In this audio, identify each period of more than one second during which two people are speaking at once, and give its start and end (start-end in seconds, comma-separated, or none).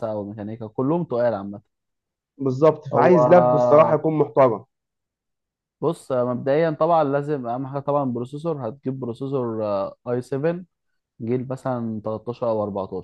none